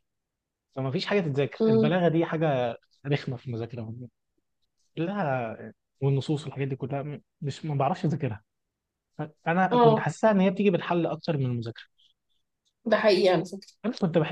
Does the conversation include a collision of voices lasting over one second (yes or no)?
no